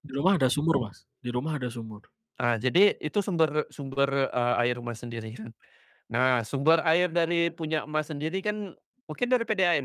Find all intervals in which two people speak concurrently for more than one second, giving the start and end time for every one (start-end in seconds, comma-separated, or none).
none